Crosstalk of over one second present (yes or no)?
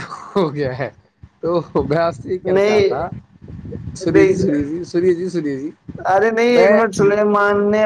no